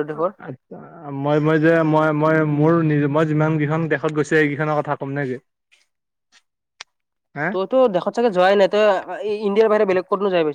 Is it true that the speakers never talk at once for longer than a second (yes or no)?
yes